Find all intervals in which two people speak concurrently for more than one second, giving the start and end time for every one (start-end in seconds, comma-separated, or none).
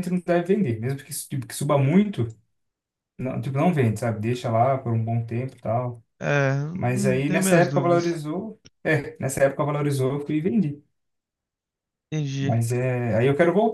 6.7-8.2